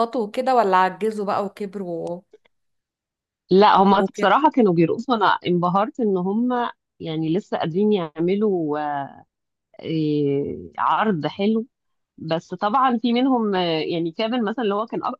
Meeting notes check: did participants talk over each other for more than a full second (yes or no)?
no